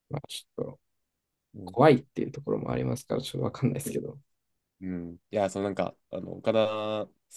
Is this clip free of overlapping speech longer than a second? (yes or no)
yes